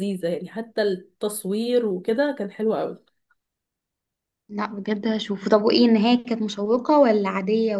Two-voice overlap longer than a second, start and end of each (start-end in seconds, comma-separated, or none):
none